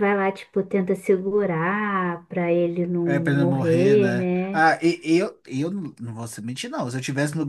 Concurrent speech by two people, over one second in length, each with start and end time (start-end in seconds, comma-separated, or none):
3.1-4.6